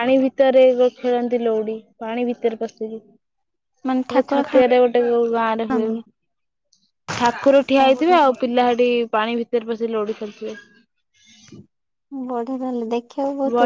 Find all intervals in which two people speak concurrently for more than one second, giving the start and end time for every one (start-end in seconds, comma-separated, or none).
none